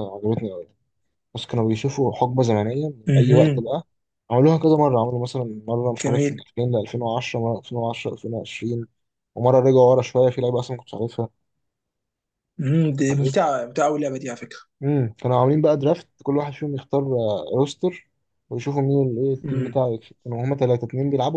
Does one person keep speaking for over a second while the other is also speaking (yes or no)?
no